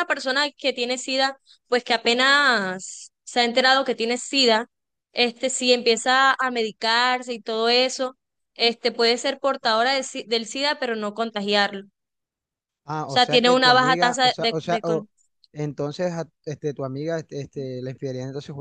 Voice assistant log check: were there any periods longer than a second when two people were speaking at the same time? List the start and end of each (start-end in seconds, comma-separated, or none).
13.1-15.1